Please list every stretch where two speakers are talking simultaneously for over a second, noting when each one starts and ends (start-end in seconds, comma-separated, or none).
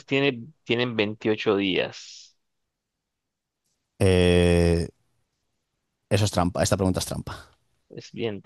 none